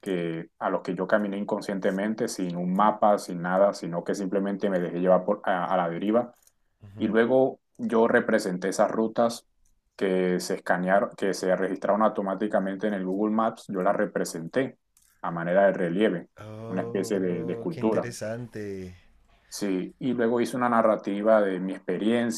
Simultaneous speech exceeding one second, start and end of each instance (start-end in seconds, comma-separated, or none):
16.7-18.1